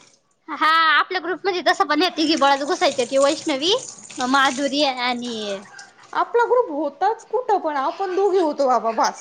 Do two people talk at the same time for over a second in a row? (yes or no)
no